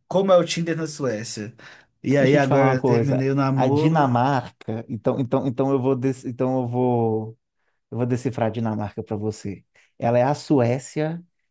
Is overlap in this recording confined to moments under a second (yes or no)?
no